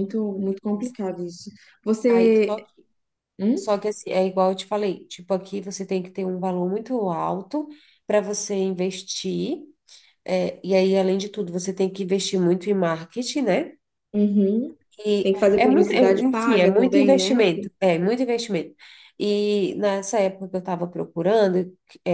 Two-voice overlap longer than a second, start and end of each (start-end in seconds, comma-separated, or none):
15.2-17.4